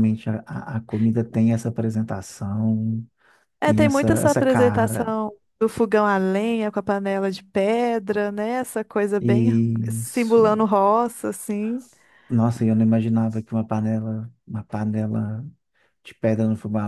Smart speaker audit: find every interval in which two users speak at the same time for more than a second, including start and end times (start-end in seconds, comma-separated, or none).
3.6-5.2, 9.2-10.7